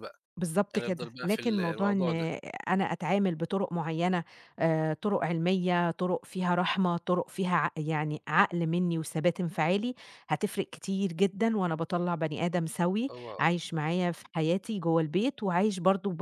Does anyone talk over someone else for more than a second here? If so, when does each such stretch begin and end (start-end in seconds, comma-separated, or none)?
0.7-2.1